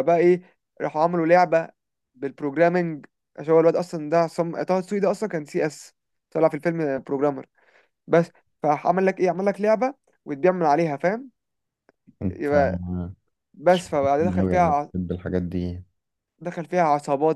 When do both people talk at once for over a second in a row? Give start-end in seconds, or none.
13.5-14.9